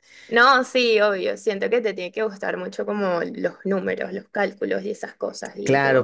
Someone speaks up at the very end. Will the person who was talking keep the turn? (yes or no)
no